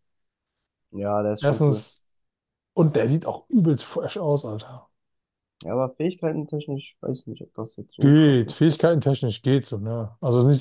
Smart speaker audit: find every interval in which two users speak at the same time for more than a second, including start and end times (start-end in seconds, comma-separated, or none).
none